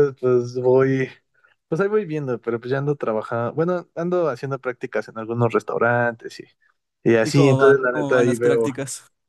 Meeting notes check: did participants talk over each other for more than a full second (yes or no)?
yes